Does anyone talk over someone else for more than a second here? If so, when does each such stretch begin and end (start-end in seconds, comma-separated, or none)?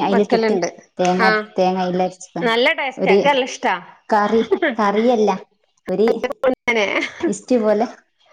none